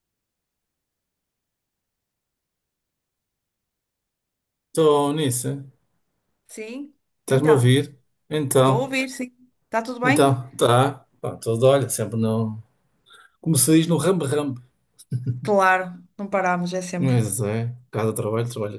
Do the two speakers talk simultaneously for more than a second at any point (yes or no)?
no